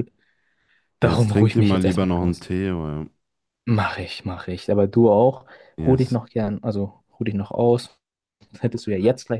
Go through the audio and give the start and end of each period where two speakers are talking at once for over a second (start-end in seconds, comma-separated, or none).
1.0-2.5